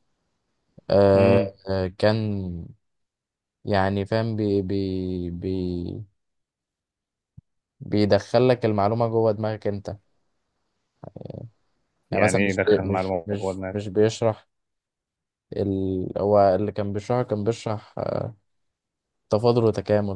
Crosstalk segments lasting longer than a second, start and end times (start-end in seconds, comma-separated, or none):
12.1-13.8